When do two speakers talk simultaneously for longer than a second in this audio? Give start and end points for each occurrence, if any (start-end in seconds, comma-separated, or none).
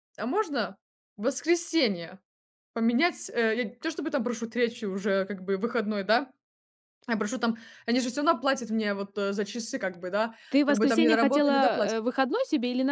10.5-12.0